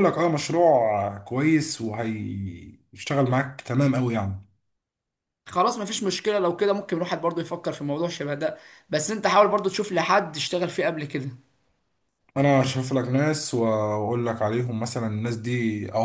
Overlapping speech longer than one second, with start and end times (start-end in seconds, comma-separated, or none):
none